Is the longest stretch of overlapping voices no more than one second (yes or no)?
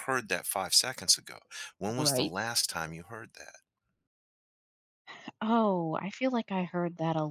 yes